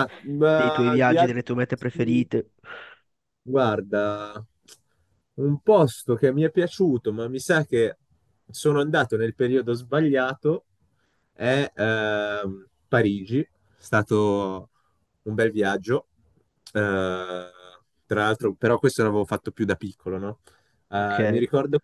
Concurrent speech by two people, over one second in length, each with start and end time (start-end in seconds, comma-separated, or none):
0.5-2.3